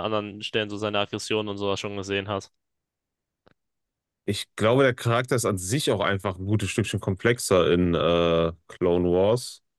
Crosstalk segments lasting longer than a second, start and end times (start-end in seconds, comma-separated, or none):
none